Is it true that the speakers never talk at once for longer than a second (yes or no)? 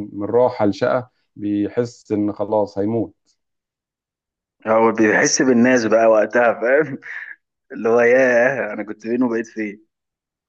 yes